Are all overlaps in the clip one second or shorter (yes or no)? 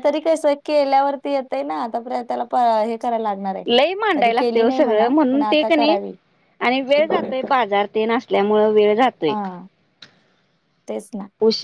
no